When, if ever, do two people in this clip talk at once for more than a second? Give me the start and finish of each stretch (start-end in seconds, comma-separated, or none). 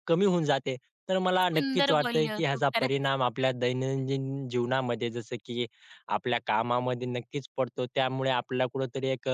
1.2-3.0